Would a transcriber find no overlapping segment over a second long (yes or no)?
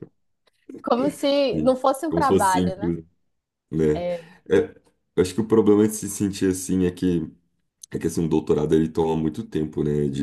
no